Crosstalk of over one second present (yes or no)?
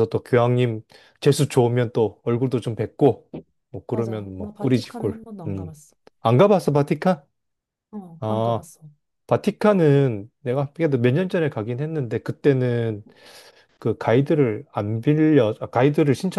yes